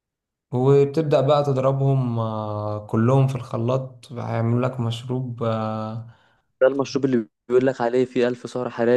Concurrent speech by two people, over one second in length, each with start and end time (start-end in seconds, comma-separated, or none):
none